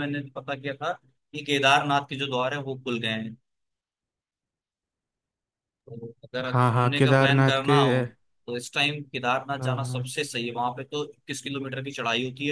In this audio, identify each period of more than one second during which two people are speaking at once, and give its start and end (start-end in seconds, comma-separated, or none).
6.5-7.7